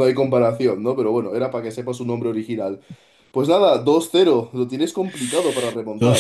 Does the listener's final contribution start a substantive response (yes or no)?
yes